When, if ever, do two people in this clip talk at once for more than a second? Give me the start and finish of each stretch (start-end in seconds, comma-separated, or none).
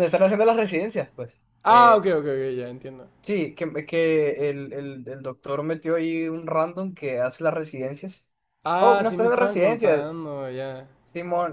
8.8-10.1